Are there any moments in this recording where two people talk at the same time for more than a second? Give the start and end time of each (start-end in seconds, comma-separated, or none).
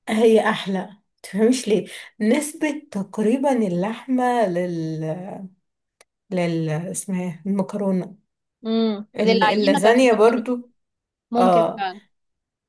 9.2-10.4